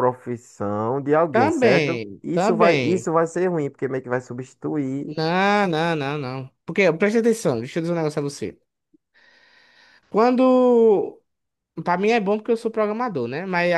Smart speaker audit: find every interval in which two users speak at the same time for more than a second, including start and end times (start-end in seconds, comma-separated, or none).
1.3-3.1